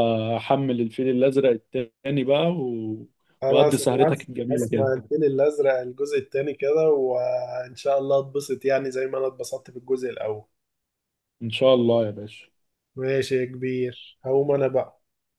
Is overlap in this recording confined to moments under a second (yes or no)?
no